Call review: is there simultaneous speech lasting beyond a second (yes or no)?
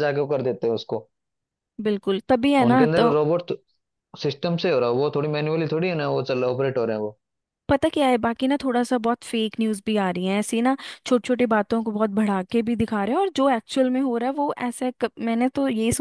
no